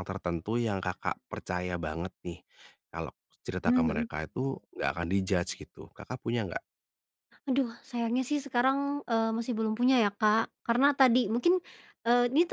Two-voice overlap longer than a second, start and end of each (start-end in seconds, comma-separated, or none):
none